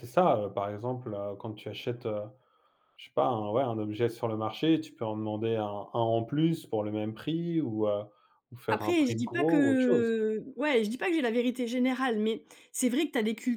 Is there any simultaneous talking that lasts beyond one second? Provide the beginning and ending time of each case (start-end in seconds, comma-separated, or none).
8.7-10.1